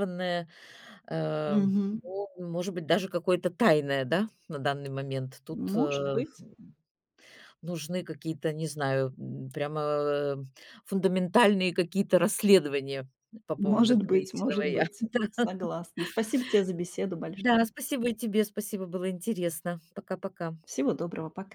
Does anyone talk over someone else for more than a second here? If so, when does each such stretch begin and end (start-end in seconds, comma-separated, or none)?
13.6-14.9